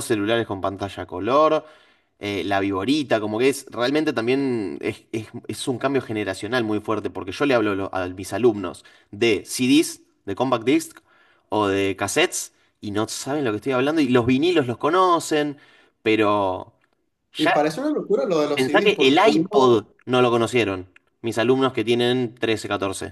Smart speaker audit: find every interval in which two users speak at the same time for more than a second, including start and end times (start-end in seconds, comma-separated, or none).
18.6-19.8